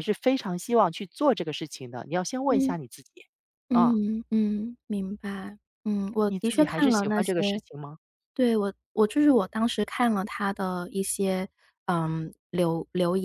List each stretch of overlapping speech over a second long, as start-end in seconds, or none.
6.2-7.6